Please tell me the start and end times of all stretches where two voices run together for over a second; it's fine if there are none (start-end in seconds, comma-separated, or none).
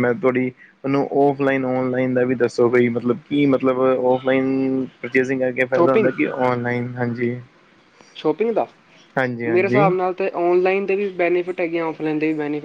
none